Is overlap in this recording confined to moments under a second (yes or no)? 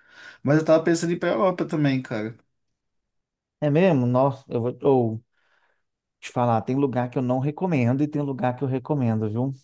yes